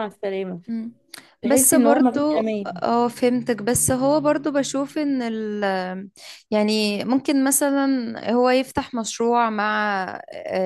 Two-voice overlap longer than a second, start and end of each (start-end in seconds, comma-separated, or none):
1.4-2.7